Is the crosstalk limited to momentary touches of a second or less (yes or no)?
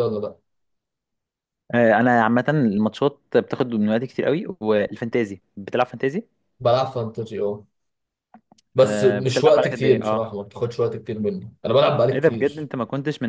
no